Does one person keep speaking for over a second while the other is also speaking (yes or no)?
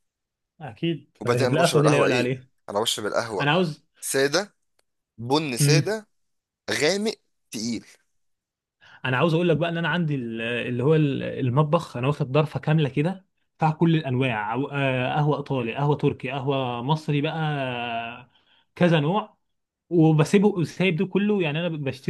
yes